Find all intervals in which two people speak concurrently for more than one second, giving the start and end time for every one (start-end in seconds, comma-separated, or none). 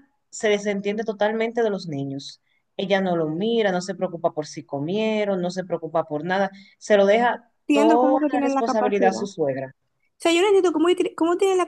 7.7-9.3